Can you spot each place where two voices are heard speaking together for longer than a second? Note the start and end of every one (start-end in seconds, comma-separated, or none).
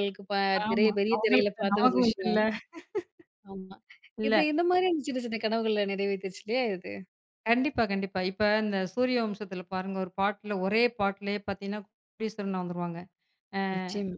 0.7-2.4